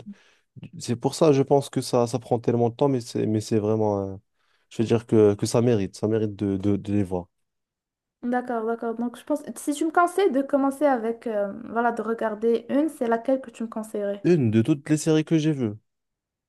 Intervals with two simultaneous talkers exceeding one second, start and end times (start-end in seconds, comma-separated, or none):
none